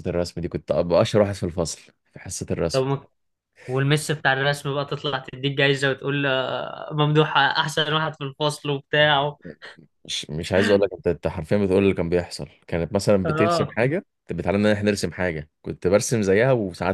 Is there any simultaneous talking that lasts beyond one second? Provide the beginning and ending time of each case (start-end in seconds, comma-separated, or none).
none